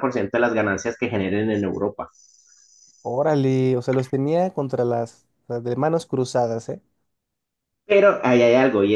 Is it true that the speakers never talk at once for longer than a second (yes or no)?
yes